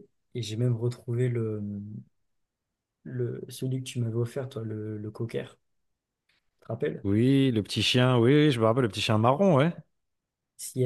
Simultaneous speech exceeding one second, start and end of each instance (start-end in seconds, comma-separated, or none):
none